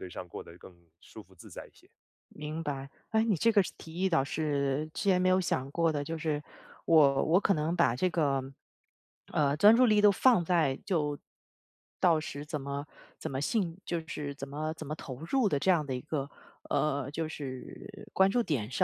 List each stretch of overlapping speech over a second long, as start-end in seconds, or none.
none